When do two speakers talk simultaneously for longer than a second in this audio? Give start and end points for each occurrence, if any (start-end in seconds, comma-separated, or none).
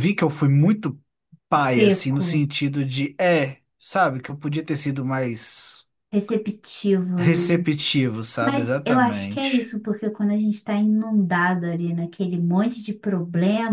8.4-9.7